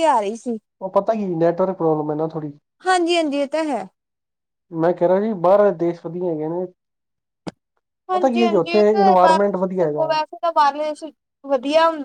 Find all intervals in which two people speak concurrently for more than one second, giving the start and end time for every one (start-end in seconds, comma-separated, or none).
8.1-10.1